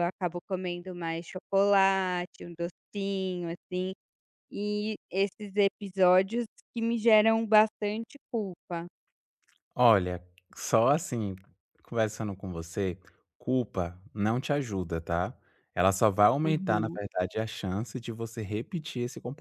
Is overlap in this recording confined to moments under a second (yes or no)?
yes